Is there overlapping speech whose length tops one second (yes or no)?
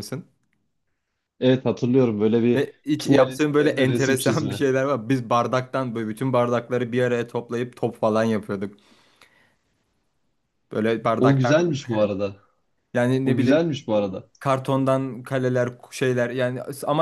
yes